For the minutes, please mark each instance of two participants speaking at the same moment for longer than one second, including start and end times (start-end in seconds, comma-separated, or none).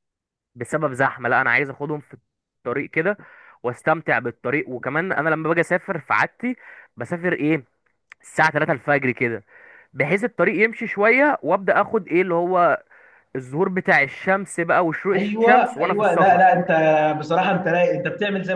15.1-16.5